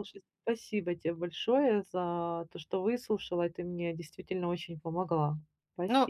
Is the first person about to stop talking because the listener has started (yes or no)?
yes